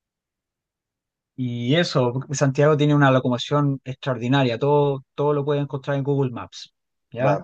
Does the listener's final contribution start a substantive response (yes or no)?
no